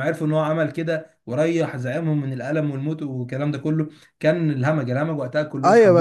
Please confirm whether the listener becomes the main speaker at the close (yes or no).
yes